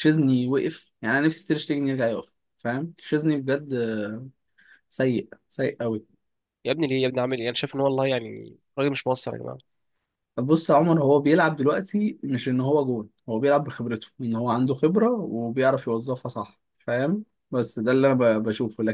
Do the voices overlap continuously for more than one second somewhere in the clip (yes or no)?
no